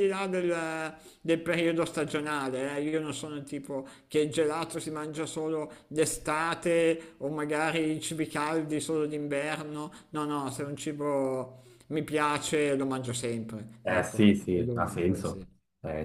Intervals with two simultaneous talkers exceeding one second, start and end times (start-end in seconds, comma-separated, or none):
13.8-15.4